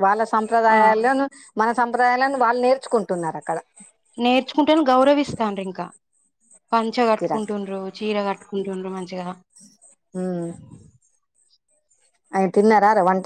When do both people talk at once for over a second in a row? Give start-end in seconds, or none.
none